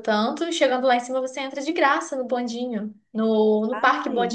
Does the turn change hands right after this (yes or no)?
no